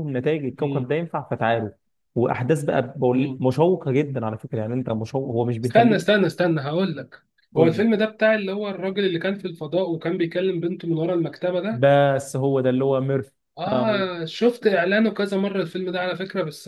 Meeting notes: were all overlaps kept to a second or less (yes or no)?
yes